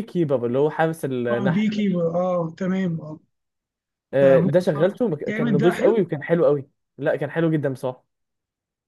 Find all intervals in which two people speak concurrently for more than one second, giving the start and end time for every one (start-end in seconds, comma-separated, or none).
4.2-6.1